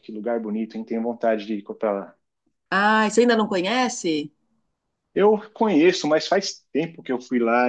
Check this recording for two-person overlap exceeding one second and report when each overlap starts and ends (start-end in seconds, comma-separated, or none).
none